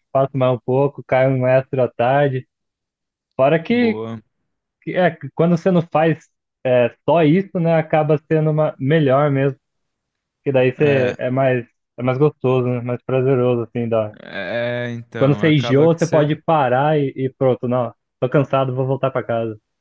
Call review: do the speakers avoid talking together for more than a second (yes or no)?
no